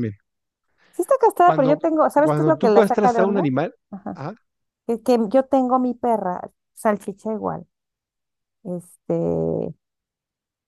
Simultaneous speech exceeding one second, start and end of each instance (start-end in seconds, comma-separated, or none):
1.4-3.5